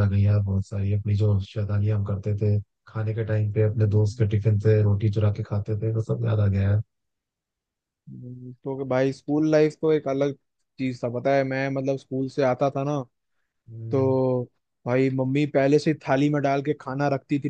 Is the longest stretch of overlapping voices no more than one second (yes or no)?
yes